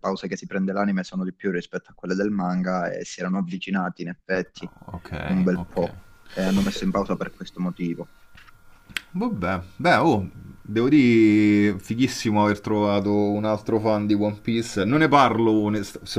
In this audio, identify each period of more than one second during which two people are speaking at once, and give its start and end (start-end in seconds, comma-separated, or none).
none